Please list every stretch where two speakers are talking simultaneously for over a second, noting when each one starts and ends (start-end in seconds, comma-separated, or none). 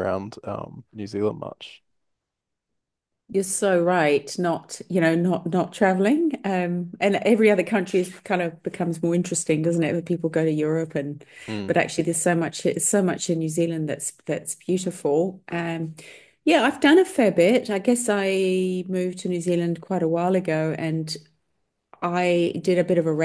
none